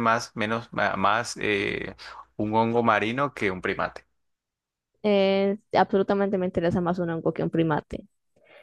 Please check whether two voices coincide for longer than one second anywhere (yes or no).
no